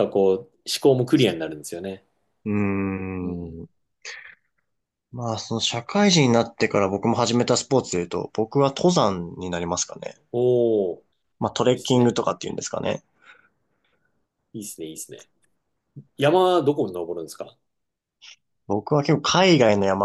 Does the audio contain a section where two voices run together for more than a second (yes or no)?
no